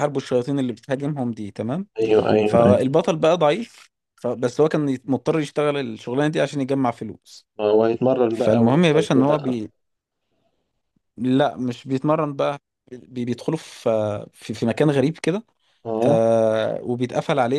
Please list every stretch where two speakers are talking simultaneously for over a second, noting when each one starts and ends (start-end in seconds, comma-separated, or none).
8.3-9.6